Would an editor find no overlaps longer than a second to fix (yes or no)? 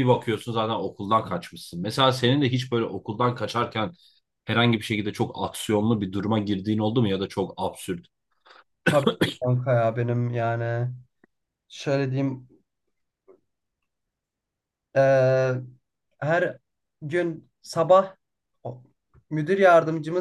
yes